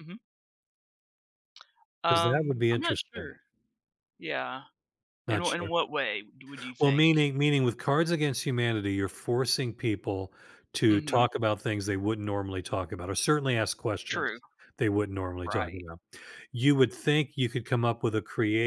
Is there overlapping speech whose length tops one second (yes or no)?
yes